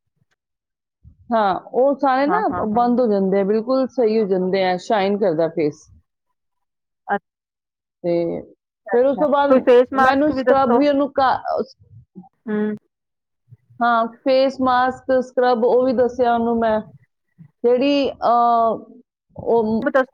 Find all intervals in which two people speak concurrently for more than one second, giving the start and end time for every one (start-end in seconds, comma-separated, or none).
none